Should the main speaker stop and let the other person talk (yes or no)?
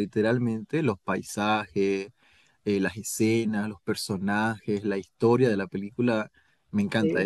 no